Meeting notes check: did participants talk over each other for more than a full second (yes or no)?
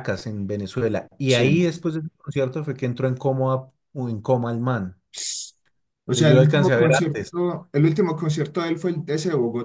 yes